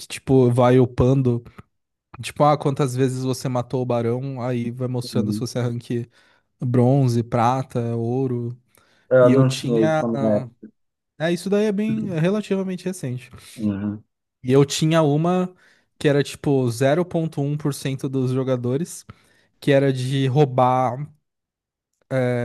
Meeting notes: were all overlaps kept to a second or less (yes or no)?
no